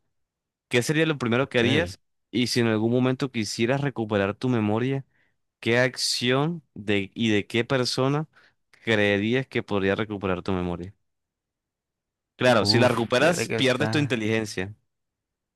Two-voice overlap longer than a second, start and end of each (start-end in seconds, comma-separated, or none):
12.6-14.2